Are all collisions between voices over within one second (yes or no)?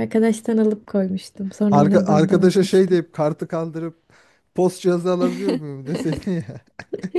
no